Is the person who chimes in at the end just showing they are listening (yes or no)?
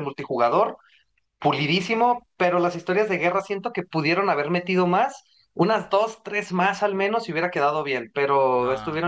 no